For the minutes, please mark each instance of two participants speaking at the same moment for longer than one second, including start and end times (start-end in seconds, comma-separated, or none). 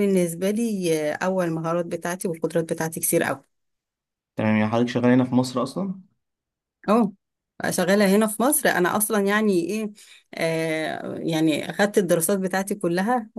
none